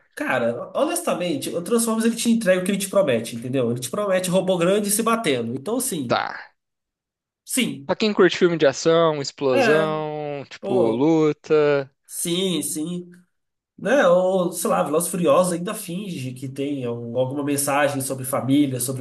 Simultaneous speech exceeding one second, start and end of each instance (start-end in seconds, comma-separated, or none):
none